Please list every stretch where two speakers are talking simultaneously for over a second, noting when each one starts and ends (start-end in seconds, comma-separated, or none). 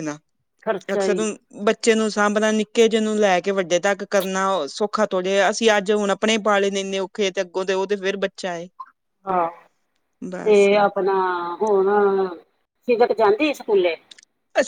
none